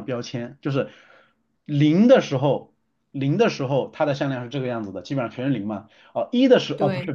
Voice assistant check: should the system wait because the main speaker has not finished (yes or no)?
yes